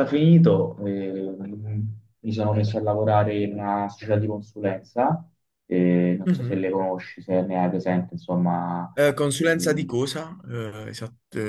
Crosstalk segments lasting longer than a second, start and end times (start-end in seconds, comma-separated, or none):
none